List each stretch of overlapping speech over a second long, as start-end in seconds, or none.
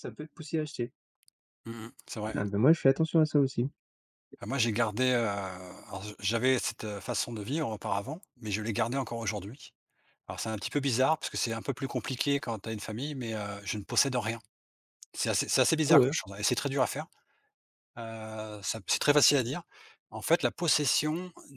none